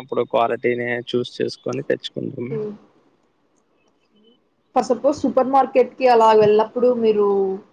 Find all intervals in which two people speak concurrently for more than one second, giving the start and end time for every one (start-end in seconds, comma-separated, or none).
none